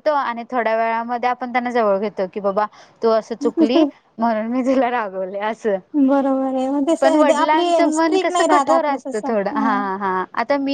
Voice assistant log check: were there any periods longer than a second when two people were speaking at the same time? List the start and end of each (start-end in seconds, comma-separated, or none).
7.0-9.9